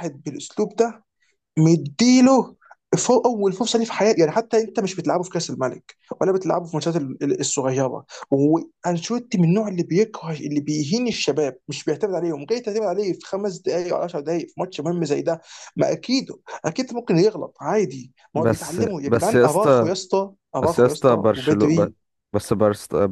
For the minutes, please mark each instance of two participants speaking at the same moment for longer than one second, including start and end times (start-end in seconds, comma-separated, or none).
18.4-19.9, 20.6-21.9